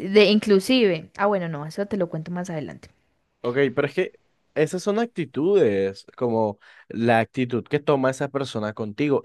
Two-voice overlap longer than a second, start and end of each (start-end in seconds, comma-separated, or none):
none